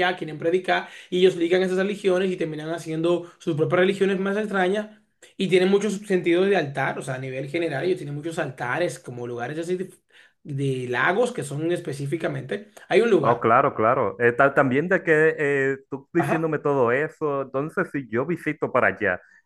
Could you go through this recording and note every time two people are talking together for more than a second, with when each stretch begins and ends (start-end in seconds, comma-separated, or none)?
none